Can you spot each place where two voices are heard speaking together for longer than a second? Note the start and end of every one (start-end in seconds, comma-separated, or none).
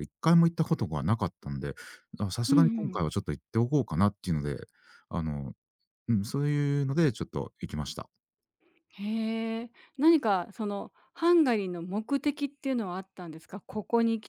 none